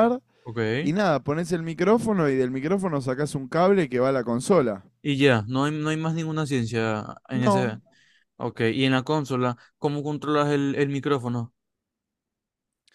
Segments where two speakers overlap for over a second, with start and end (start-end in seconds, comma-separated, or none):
none